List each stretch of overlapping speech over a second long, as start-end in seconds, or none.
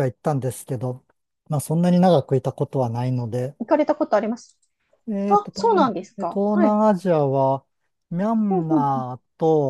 5.3-6.8